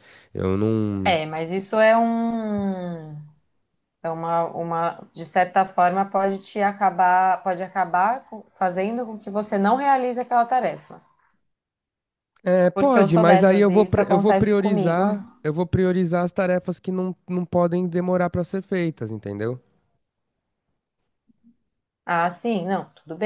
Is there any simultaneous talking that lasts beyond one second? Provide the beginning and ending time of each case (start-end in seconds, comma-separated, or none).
12.7-15.0